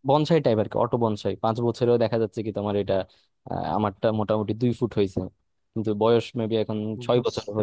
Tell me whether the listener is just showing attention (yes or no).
no